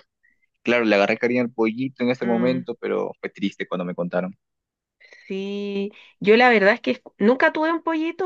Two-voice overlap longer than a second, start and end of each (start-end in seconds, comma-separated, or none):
none